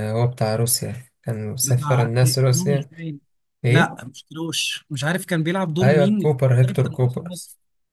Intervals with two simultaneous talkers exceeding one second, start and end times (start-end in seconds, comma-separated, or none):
1.6-2.9, 5.8-7.3